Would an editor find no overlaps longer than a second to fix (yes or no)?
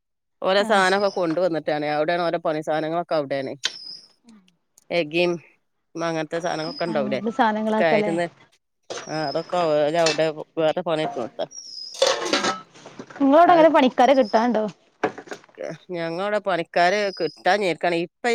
yes